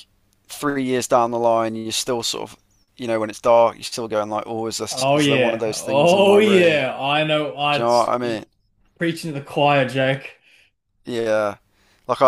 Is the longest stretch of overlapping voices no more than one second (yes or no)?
no